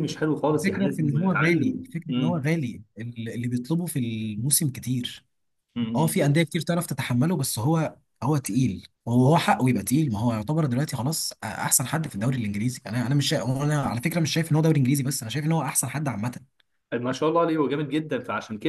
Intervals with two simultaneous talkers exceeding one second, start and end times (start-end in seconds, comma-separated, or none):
0.5-2.4